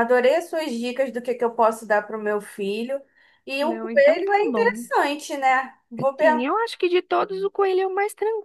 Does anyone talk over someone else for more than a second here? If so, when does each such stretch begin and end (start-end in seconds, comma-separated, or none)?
3.6-4.9